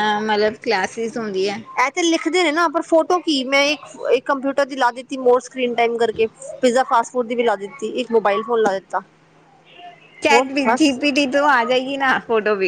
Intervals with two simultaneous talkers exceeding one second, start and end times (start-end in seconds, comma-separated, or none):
none